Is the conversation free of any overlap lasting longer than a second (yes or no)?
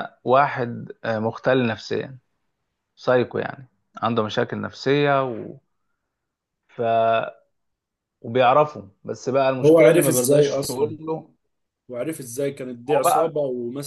no